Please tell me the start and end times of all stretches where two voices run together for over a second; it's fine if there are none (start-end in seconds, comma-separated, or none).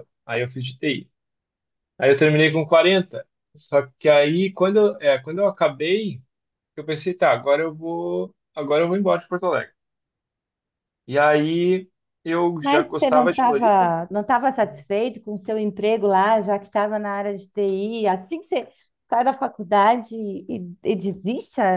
12.6-13.9